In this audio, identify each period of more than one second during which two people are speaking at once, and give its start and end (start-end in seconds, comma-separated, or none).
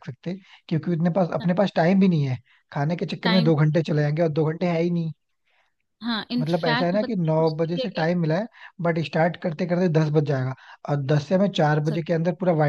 6.4-8.1